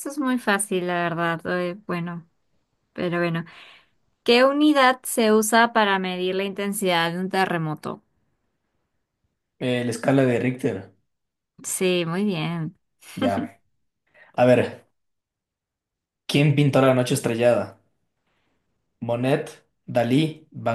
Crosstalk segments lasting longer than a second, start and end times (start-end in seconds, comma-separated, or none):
none